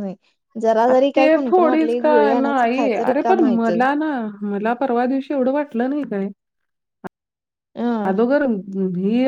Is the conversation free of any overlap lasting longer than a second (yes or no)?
no